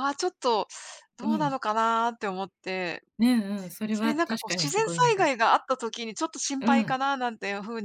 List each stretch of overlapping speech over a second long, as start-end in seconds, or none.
3.9-5.3